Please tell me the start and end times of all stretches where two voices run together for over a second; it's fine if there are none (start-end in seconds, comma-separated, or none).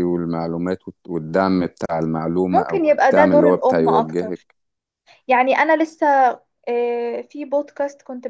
2.5-4.5